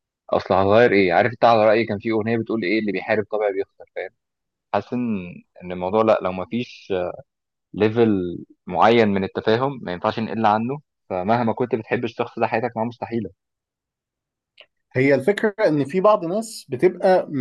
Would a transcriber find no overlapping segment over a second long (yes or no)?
yes